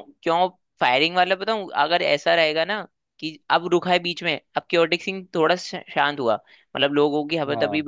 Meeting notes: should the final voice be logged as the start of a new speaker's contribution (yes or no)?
no